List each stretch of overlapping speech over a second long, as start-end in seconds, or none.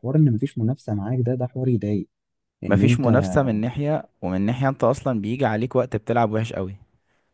none